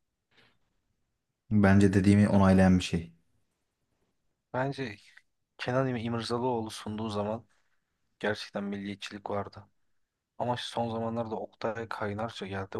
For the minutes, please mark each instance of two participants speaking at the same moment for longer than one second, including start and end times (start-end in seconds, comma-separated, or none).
none